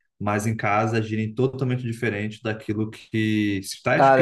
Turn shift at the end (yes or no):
yes